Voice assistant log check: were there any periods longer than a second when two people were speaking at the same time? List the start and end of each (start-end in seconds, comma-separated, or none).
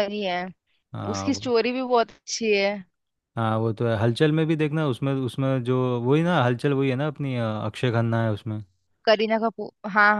none